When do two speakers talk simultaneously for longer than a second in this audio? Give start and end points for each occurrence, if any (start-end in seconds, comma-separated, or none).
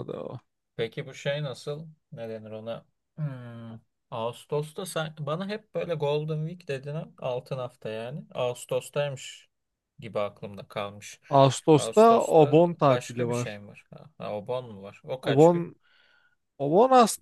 11.7-13.6